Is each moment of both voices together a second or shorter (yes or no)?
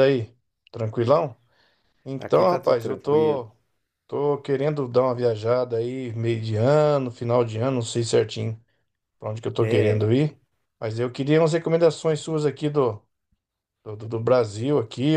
no